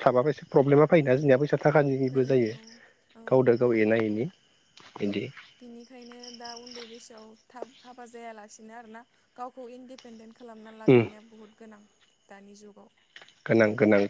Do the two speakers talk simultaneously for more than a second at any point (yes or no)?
no